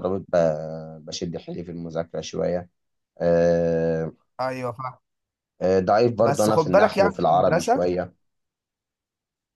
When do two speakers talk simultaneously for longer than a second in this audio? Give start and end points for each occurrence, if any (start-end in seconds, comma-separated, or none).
6.2-7.9